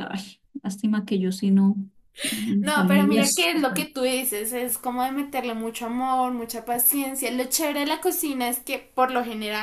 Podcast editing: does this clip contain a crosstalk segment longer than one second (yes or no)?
yes